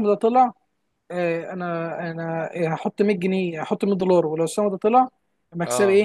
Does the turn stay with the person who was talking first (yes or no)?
yes